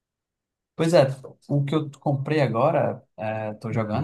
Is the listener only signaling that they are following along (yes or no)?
yes